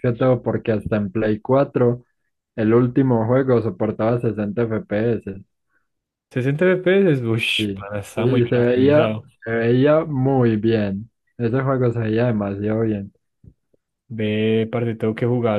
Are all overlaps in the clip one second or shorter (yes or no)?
no